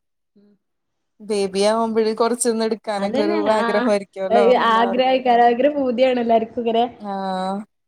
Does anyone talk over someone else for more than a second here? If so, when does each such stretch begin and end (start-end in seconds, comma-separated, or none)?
none